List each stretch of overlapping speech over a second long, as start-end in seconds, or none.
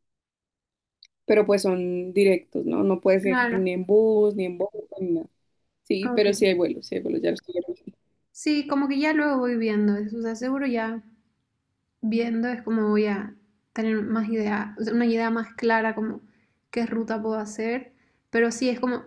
none